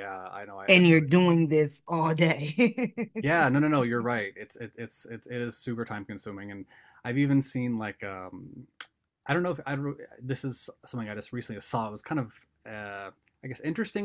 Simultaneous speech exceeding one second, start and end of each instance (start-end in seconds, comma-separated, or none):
none